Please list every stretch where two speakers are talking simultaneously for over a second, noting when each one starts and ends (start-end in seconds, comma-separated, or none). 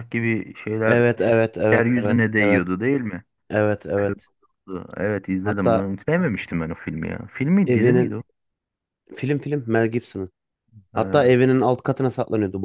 0.9-2.6